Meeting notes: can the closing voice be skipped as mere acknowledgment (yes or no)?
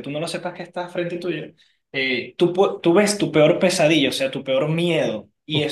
yes